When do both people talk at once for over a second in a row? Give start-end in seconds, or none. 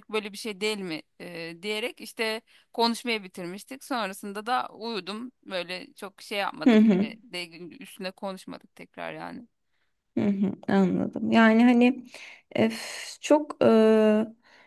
none